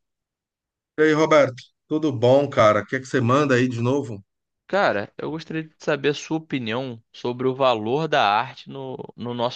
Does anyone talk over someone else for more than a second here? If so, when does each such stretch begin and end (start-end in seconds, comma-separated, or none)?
none